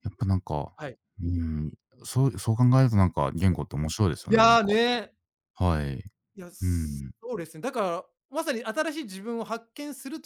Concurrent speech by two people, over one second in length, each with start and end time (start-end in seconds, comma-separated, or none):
none